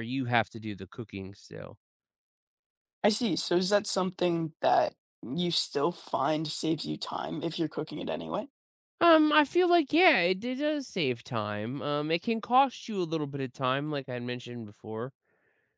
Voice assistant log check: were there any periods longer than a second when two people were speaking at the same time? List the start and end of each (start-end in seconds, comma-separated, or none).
none